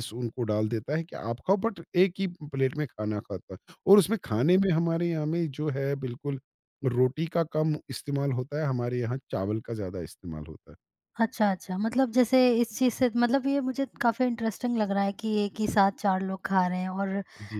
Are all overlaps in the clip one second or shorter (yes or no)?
yes